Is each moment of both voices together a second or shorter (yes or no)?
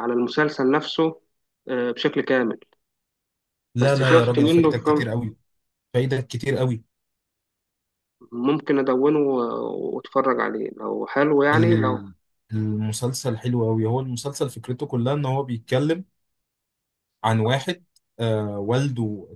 no